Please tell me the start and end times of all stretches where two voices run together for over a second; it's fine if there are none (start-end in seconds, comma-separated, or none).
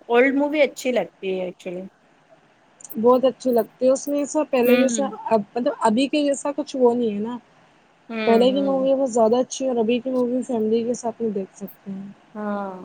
none